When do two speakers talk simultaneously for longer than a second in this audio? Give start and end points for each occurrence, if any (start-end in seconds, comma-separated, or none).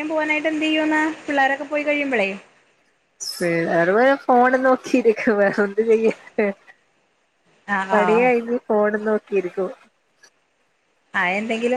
none